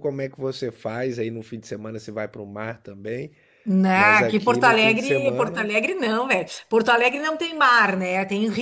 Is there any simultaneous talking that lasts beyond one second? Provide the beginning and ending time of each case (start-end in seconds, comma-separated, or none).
3.9-5.7